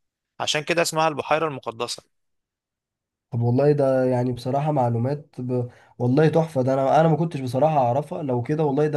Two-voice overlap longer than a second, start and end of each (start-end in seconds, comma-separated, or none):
none